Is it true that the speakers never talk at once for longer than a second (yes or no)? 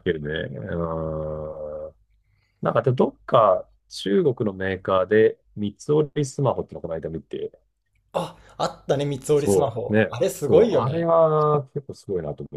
no